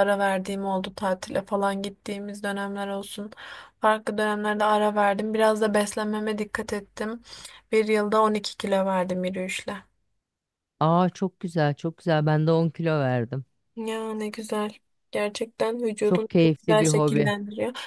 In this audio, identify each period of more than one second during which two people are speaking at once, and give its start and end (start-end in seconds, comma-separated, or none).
16.0-17.3